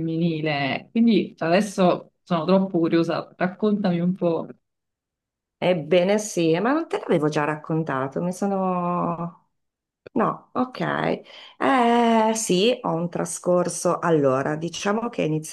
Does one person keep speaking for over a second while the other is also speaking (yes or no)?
no